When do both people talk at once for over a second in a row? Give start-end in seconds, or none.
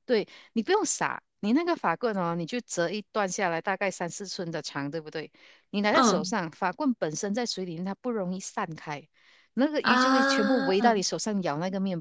9.8-11.1